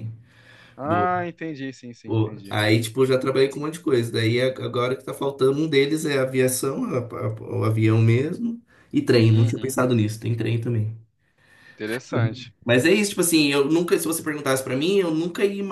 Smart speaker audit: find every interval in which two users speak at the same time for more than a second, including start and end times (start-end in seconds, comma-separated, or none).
none